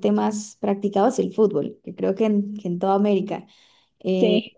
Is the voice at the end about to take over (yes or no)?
no